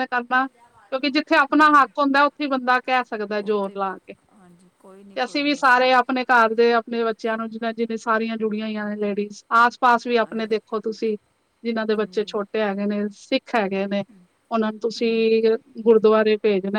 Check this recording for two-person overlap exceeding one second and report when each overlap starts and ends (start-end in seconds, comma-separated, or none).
none